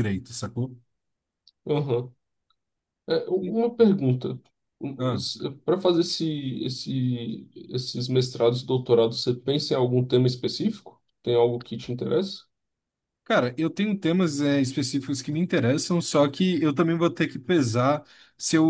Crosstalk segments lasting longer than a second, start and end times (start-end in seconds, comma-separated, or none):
none